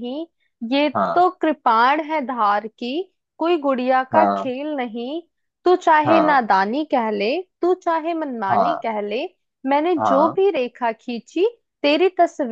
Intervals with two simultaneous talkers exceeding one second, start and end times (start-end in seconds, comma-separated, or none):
none